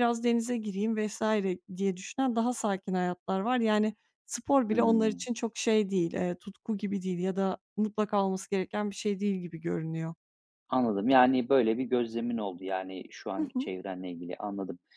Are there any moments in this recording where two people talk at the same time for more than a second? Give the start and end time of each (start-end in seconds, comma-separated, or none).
none